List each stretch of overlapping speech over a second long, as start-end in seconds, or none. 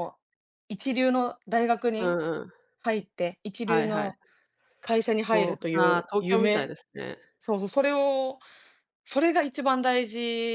5.2-6.7